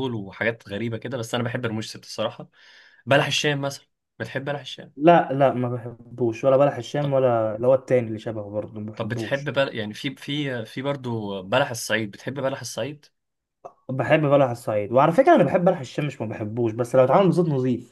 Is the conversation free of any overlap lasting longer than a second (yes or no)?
yes